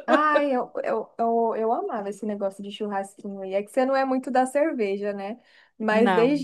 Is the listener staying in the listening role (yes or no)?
yes